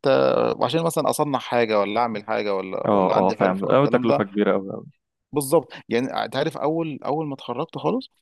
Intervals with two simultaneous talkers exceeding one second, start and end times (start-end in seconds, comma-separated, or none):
2.9-4.2